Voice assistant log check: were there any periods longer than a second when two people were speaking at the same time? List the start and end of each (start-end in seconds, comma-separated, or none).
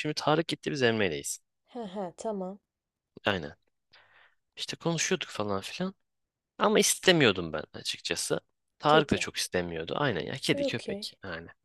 none